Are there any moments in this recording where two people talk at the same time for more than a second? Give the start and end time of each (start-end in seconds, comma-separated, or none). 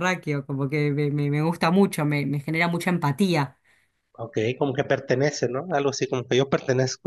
none